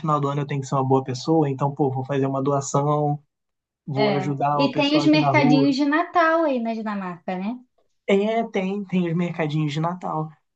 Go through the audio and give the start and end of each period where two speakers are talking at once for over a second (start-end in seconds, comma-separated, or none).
3.9-5.7